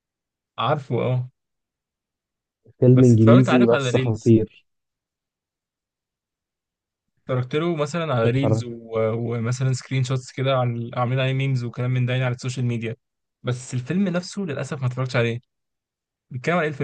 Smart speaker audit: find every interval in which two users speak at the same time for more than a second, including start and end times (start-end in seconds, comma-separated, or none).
2.9-4.3